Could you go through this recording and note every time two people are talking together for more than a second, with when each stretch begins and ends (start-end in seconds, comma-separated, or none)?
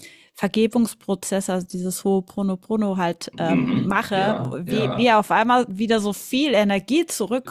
3.3-5.2